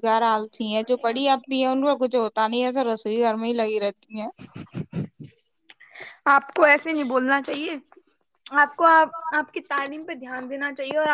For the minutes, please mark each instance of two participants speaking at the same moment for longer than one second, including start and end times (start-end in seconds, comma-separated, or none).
none